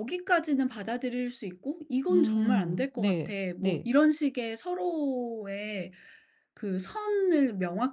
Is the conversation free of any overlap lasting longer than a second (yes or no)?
no